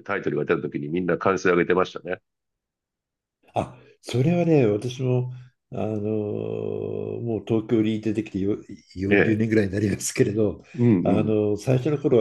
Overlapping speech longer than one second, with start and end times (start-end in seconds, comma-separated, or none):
none